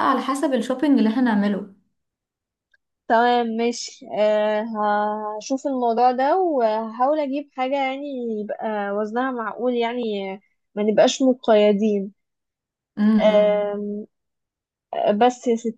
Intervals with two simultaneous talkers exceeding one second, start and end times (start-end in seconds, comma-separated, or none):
none